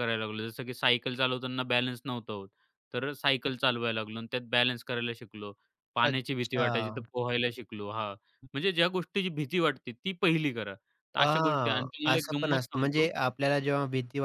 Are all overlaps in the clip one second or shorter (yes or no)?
no